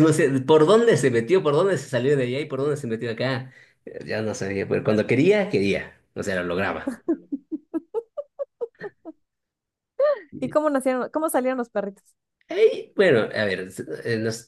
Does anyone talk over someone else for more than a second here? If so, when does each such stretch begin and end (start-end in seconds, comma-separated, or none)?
none